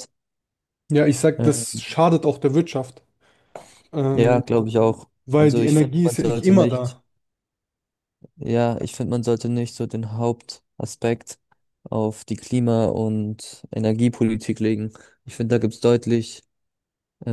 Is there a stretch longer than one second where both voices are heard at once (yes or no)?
yes